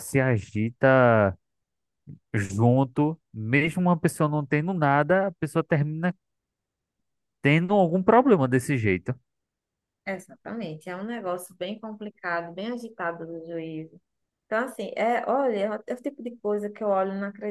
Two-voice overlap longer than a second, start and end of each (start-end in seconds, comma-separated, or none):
none